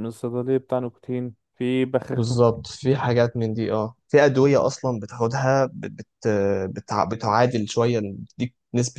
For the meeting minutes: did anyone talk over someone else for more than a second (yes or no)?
no